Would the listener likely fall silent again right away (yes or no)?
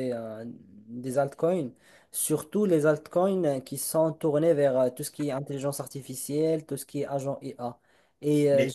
yes